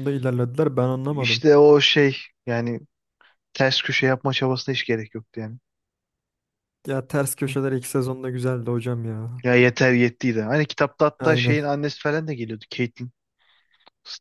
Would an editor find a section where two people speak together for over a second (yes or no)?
no